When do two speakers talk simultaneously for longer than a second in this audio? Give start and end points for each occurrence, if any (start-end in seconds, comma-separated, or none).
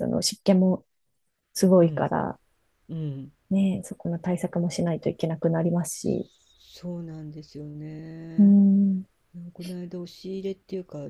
none